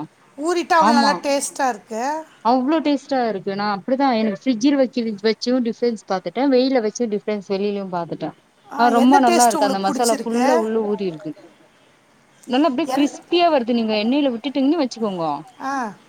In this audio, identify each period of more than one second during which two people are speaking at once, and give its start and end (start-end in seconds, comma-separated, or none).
8.8-10.5